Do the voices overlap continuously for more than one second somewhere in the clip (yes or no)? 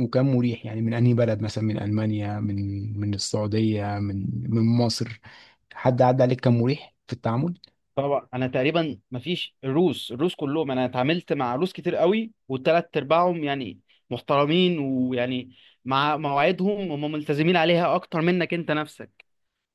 no